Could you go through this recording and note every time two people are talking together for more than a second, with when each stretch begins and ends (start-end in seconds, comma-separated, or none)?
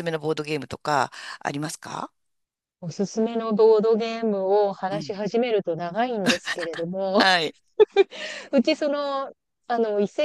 none